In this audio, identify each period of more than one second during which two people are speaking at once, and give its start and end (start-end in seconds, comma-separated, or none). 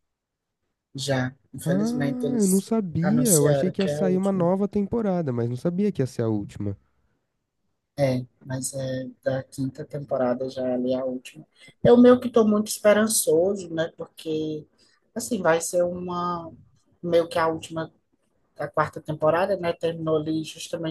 2.4-4.5